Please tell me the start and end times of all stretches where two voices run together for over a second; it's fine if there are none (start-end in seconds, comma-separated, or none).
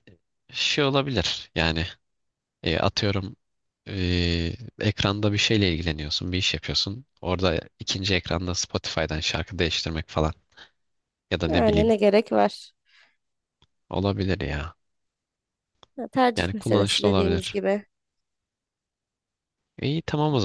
16.4-17.6